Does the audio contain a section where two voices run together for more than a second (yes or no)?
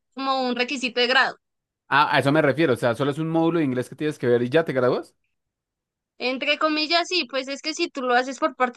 no